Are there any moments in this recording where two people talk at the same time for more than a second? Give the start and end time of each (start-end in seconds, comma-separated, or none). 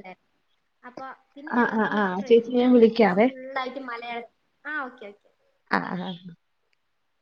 1.6-3.3